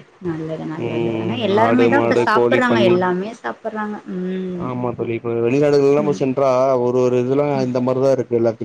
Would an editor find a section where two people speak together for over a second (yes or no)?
yes